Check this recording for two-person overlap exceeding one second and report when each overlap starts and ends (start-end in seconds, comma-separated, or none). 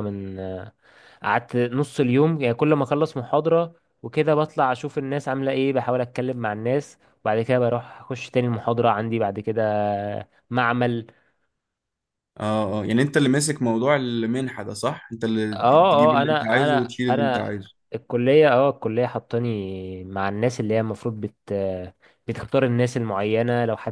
15.5-17.5